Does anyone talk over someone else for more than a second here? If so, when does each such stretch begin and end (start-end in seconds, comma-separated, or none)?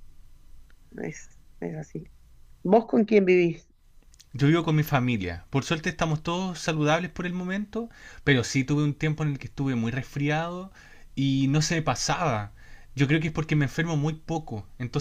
none